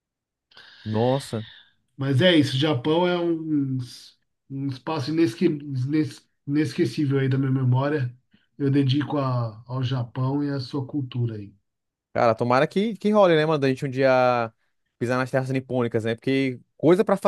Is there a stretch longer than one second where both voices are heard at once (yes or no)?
no